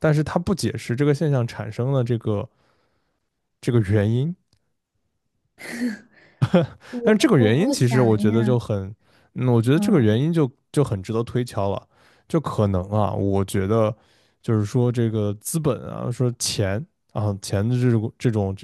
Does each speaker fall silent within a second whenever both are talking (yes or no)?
no